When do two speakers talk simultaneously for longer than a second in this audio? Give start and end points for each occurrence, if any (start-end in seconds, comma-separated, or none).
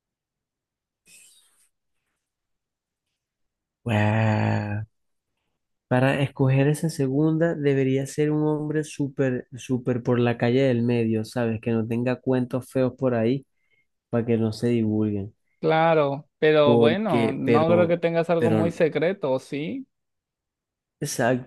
16.6-18.6